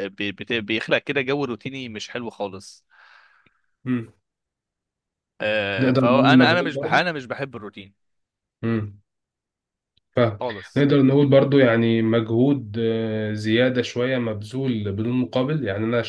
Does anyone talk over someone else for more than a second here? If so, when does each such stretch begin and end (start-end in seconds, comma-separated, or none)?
5.8-7.0